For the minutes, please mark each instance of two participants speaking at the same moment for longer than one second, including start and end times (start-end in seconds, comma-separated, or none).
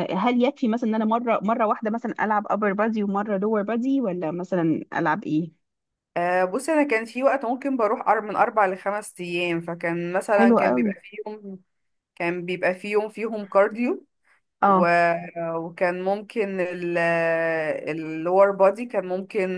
none